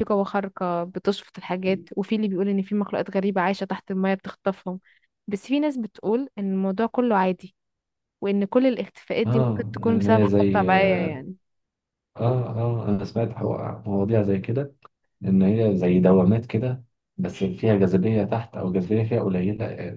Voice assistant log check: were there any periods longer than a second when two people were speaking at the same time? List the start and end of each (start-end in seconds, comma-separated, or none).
9.2-11.2